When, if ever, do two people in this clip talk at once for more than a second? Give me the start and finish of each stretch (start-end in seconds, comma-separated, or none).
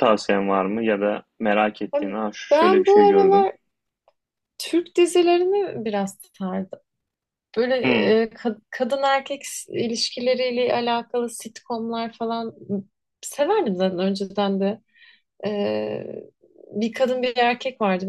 1.9-3.5